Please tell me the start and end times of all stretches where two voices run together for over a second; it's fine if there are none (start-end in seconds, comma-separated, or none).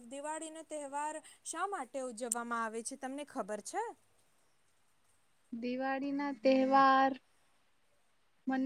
none